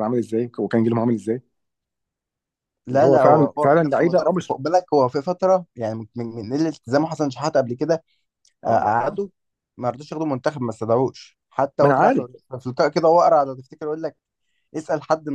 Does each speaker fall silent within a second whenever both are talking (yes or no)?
no